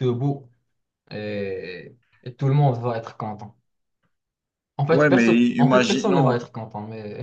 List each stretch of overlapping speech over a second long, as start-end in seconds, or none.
4.9-6.4